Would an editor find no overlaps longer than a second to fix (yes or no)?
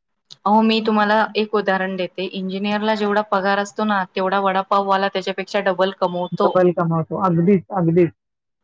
yes